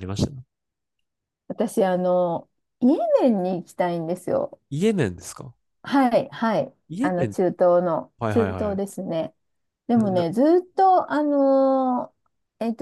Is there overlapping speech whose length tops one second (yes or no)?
no